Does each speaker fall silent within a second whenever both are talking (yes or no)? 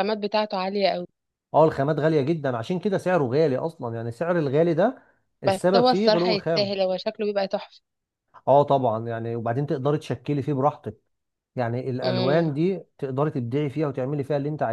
no